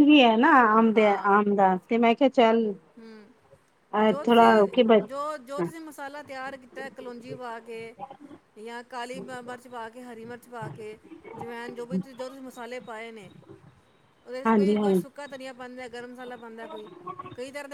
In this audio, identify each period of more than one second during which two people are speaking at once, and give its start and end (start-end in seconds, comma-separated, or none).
none